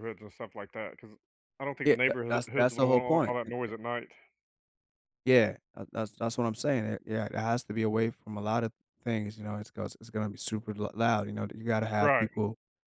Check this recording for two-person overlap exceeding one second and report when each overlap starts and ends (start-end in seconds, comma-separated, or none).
1.9-3.5